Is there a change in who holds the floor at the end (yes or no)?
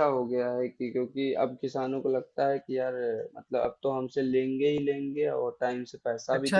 yes